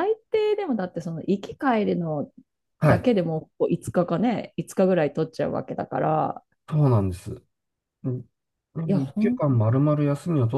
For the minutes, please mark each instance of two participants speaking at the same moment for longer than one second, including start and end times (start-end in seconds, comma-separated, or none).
none